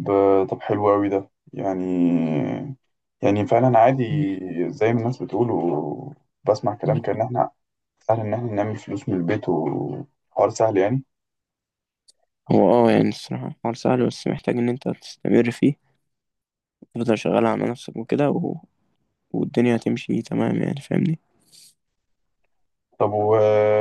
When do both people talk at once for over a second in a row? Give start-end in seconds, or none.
none